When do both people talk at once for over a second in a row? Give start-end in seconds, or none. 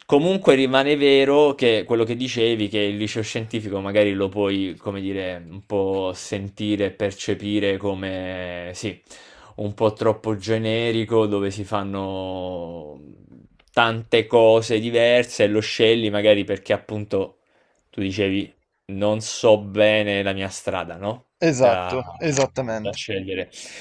none